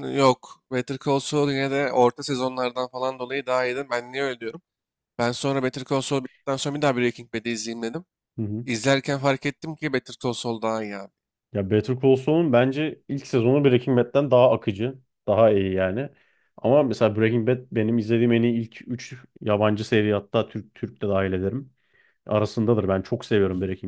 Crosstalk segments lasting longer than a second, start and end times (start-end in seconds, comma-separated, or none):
none